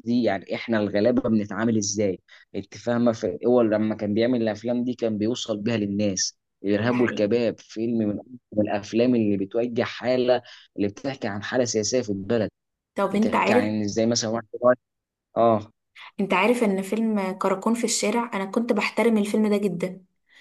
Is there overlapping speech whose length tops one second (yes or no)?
no